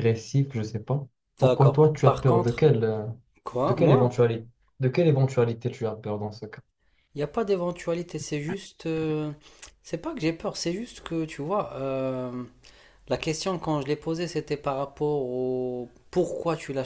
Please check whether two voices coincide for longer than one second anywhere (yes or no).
yes